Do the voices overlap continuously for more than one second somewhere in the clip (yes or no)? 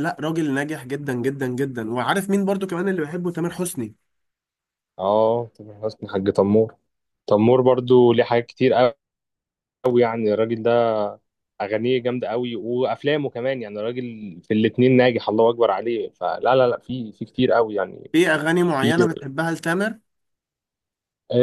no